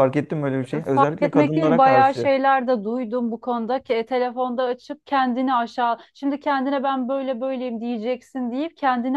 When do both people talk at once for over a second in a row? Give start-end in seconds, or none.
0.9-2.4